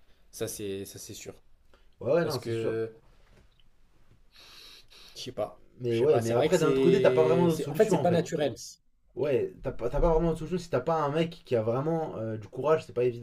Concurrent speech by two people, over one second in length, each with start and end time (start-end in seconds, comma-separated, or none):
5.8-8.3